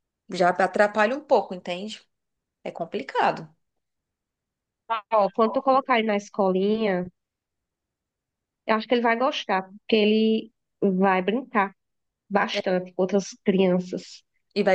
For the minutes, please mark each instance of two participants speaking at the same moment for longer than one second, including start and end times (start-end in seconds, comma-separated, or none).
none